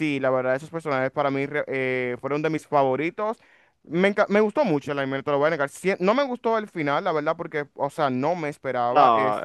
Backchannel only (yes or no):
yes